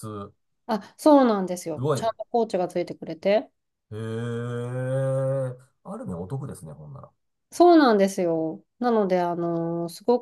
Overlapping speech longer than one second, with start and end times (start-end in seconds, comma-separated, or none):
none